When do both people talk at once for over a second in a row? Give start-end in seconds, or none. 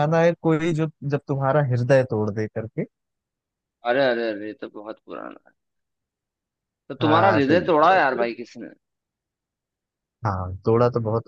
7.0-8.3